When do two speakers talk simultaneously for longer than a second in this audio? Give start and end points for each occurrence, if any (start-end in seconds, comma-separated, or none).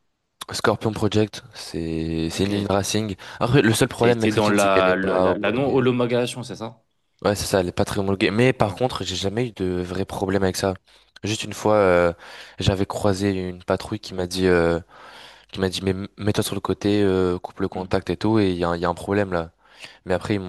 4.0-5.8